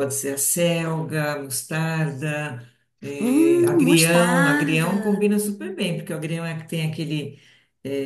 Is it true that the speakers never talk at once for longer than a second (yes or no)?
no